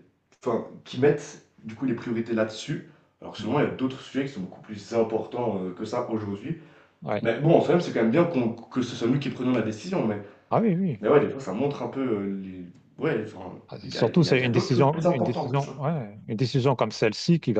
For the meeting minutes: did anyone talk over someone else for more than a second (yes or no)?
yes